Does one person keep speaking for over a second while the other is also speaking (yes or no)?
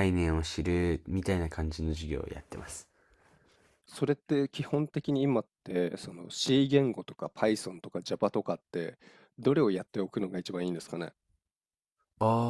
no